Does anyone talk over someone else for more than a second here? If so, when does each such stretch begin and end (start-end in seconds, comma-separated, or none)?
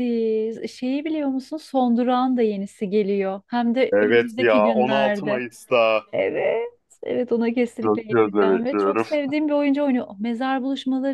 3.9-5.4, 7.8-9.1